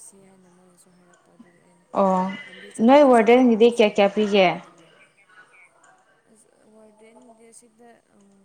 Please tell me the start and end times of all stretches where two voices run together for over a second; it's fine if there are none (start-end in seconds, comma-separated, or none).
2.8-4.5